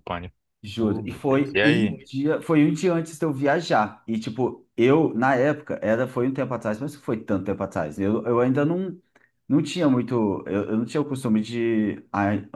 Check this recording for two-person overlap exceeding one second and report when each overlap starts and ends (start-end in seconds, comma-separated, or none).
0.8-2.1